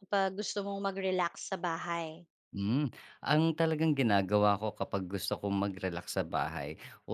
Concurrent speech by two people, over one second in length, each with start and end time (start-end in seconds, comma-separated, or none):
none